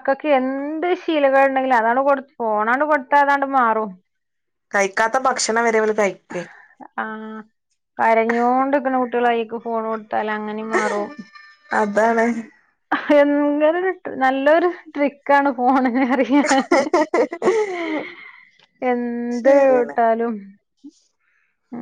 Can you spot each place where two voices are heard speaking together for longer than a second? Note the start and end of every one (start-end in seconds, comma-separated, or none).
none